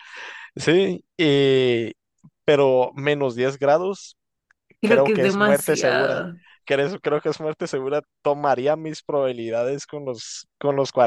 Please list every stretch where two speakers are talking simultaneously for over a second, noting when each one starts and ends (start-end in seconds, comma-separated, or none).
4.8-6.2